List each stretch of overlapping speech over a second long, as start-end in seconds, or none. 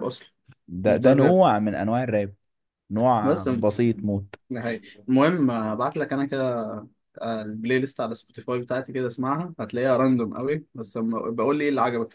none